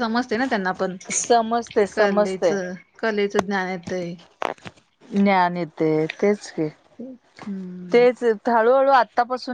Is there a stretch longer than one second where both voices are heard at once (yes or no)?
no